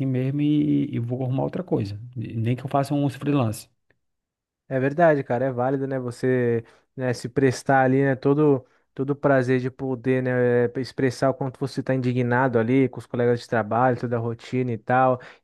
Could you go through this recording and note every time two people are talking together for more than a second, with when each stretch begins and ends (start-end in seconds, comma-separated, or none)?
none